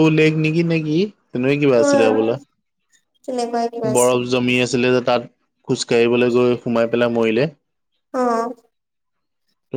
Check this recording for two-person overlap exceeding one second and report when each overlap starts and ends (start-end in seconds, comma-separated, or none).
none